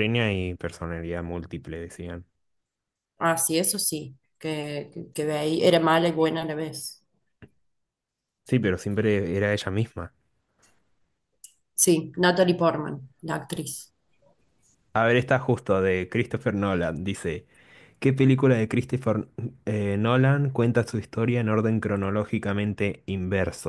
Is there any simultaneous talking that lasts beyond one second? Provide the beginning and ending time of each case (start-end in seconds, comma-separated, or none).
none